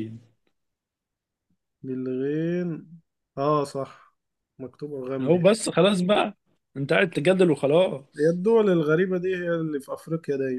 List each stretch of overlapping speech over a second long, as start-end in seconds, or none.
none